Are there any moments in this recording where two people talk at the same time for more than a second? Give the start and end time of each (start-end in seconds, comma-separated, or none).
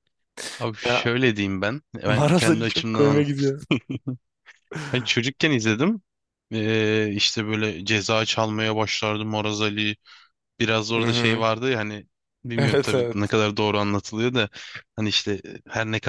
2.0-3.5